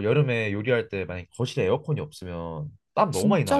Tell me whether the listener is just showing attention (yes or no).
no